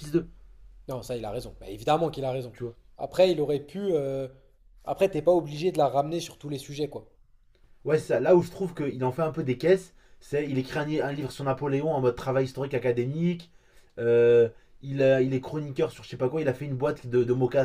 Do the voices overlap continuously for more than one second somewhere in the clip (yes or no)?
no